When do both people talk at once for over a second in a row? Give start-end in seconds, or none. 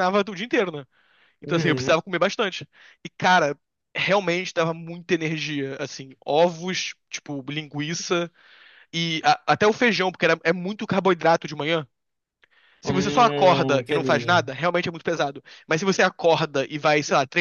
12.8-14.3